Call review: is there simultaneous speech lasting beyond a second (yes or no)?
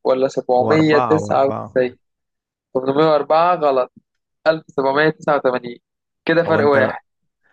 yes